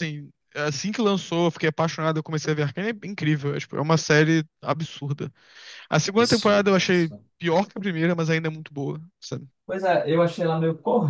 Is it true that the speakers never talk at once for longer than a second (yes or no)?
no